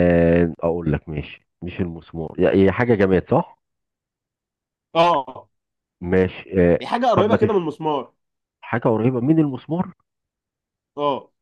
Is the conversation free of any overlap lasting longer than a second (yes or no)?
yes